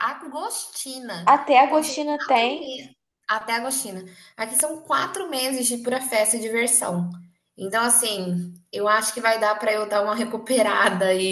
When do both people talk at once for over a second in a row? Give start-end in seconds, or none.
1.3-2.8